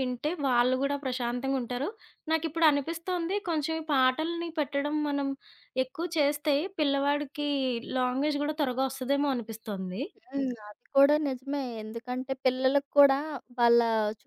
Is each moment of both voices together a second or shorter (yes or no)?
yes